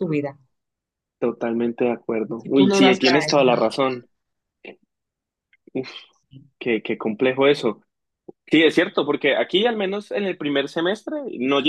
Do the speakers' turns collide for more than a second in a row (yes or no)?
yes